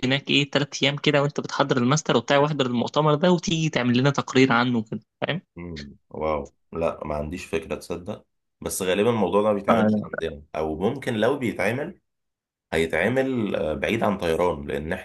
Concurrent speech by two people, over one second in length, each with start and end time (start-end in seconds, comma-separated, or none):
none